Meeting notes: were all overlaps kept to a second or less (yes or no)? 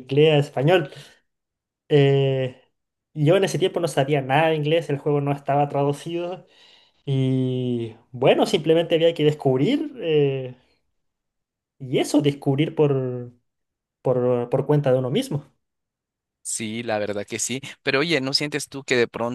yes